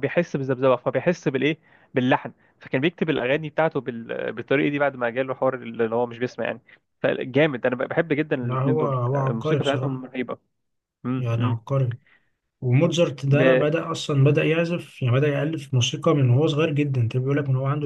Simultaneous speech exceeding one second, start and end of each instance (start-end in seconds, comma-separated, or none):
8.4-10.1